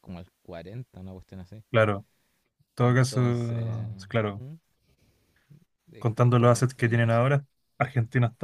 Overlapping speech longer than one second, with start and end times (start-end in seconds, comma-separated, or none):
6.0-7.3